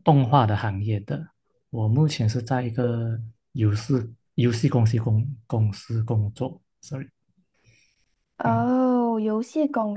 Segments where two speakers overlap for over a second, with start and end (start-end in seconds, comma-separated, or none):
none